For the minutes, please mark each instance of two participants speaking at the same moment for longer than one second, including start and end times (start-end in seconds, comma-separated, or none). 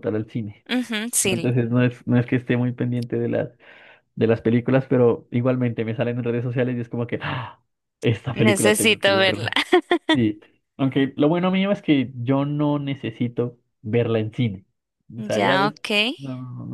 8.3-9.5